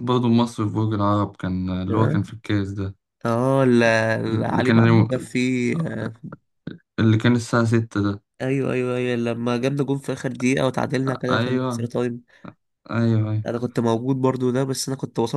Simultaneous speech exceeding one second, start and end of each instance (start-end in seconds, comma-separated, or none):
none